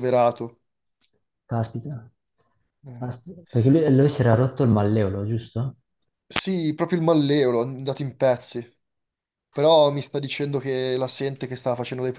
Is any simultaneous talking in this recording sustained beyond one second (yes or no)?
no